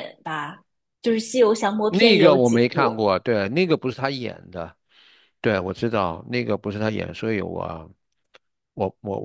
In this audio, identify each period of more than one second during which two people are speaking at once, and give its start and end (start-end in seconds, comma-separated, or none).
1.9-3.1